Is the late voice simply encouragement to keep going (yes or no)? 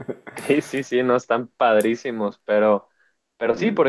yes